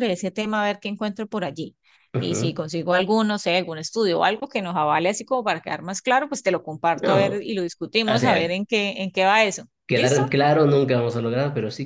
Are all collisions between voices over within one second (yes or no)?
yes